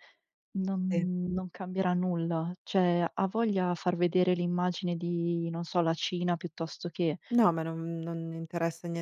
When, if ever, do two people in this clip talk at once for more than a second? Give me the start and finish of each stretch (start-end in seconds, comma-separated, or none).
none